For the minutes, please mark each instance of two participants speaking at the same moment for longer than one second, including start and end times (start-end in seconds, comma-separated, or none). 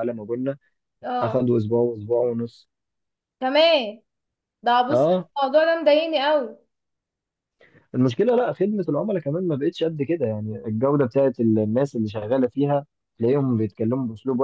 none